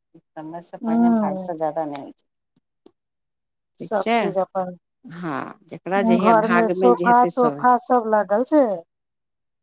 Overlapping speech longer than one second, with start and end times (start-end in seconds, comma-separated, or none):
6.2-7.8